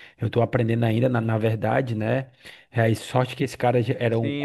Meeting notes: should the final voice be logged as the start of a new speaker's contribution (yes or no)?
yes